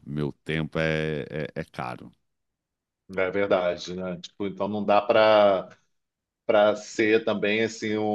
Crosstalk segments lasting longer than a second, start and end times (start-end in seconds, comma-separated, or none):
none